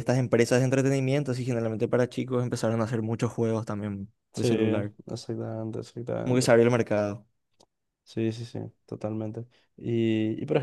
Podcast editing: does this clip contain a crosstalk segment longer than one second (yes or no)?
no